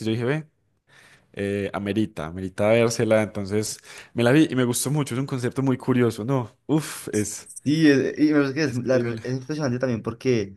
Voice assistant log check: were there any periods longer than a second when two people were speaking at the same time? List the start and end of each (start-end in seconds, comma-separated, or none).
none